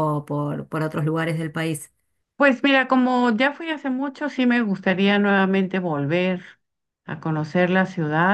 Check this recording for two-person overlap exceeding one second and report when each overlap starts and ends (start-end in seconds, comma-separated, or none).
none